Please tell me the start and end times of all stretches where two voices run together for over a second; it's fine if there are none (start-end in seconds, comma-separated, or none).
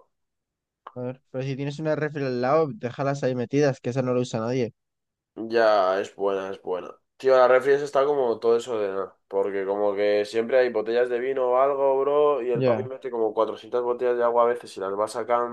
none